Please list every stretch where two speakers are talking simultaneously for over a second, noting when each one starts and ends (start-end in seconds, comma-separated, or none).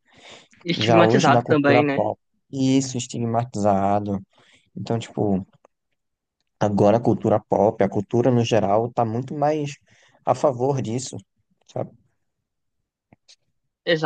0.8-2.0